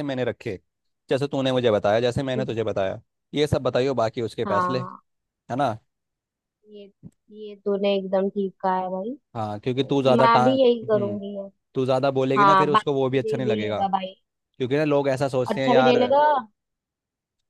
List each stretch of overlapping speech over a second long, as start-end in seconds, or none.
9.6-11.2, 12.4-13.8